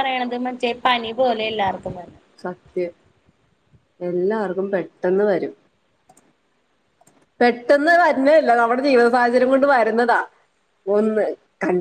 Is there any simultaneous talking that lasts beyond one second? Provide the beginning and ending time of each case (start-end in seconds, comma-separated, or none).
none